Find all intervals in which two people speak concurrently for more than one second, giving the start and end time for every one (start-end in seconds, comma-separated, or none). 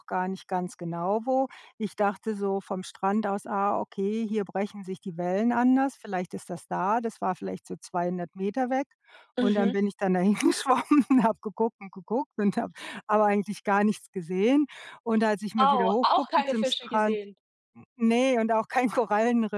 15.6-17.2